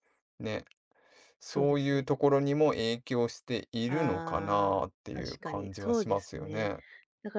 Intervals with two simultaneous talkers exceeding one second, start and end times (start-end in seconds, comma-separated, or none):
3.9-6.7